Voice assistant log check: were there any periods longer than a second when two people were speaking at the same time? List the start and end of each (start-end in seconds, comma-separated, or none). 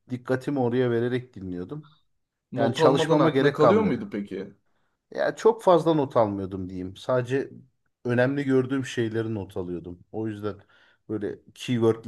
2.5-4.1